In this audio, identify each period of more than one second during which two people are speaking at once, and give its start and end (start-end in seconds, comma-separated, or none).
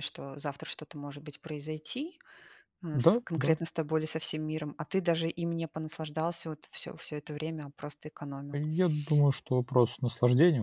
none